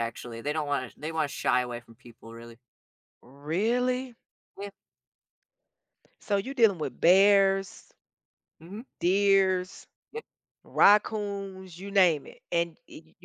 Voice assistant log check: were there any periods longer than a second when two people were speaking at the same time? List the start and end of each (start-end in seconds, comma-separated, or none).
none